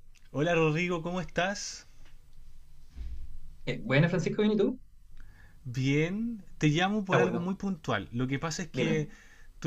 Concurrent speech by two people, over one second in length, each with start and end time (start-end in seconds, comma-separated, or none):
none